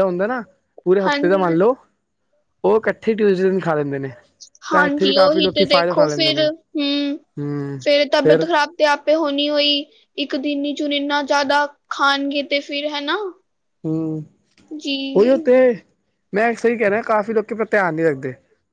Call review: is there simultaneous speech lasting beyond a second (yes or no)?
yes